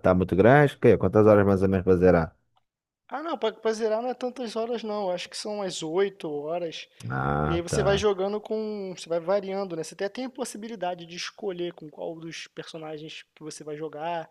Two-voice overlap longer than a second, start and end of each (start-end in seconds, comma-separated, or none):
none